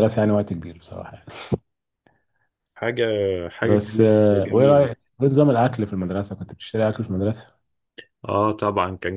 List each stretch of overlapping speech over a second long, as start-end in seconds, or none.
3.6-4.9